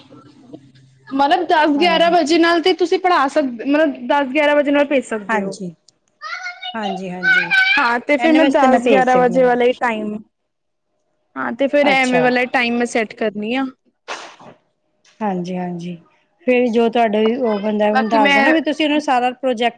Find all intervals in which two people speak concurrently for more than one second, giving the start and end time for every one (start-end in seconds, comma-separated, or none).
8.2-9.6